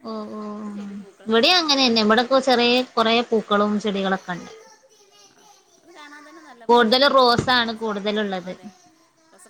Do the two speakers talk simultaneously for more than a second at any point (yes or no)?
yes